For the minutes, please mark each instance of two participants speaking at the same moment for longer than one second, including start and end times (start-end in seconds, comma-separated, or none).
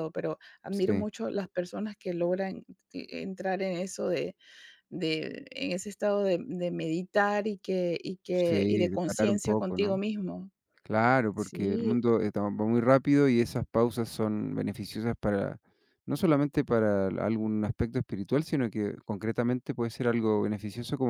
8.4-9.9